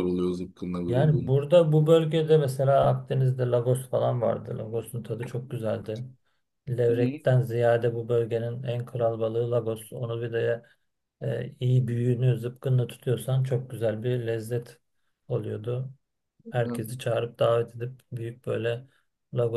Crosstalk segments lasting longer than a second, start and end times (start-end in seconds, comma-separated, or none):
none